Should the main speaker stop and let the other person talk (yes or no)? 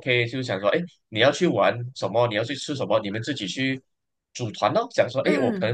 no